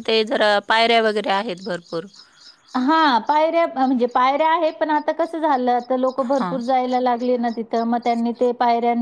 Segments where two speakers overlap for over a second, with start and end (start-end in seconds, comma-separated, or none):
none